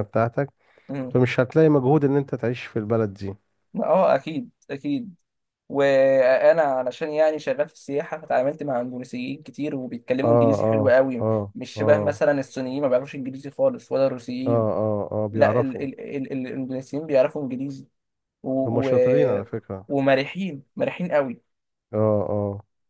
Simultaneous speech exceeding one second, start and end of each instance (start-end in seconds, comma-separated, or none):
10.2-12.2